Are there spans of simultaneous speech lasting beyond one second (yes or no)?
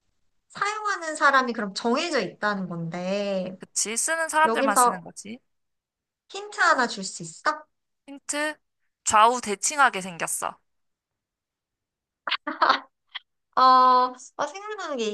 no